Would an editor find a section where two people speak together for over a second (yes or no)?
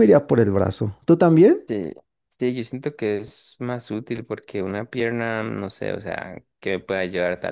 no